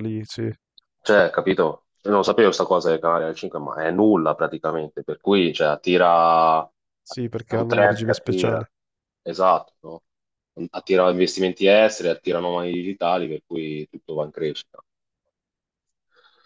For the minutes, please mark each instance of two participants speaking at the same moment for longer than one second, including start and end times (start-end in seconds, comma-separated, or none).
7.0-8.7